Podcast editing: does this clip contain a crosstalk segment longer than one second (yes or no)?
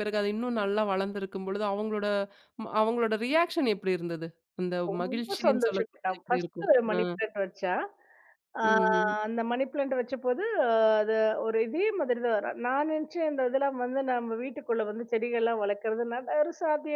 yes